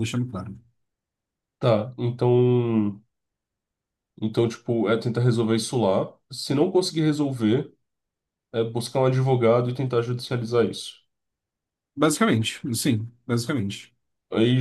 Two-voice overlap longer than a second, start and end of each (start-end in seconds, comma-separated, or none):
none